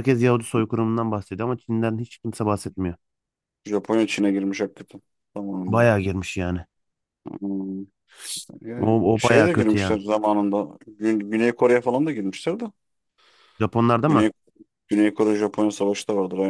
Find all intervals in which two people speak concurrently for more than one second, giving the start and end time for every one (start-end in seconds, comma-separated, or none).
8.8-10.0